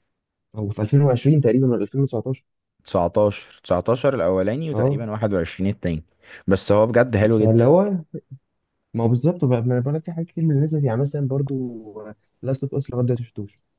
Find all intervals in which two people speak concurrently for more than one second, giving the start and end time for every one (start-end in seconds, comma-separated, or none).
none